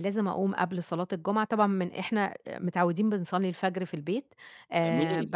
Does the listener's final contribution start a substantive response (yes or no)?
no